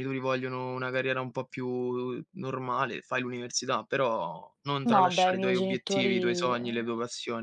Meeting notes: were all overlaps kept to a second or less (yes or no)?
no